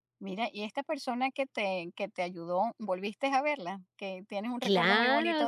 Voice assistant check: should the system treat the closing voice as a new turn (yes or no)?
yes